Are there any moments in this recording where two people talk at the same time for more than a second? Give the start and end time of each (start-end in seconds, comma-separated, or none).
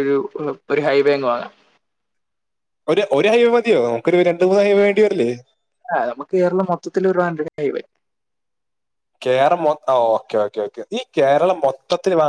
none